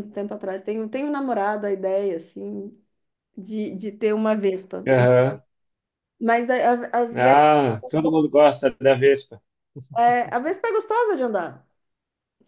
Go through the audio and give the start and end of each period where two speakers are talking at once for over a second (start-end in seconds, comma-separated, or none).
none